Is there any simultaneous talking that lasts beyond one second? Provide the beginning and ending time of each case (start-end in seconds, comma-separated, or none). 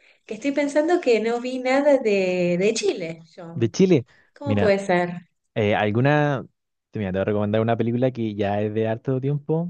none